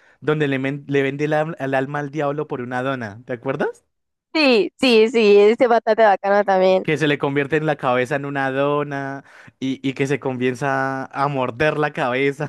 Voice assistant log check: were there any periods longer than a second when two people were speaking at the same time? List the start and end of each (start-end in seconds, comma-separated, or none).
none